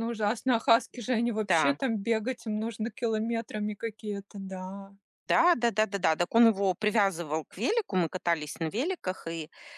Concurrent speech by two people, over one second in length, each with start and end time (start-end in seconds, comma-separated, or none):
none